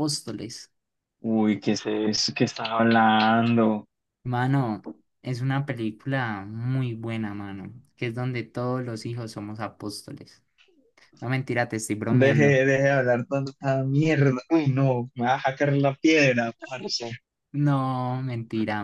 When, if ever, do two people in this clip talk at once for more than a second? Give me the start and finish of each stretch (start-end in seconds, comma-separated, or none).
none